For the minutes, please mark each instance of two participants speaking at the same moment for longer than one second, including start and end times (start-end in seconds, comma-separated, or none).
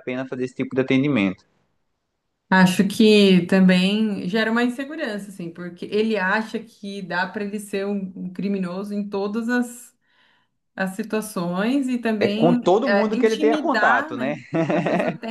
12.2-14.3